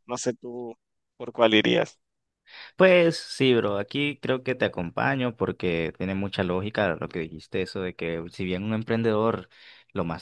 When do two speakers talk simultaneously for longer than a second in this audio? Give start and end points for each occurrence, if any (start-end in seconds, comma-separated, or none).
none